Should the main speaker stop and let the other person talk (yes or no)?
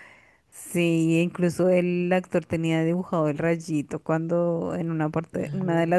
no